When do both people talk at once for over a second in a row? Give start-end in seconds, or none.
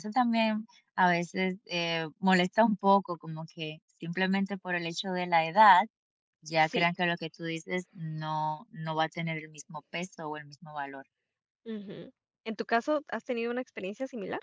none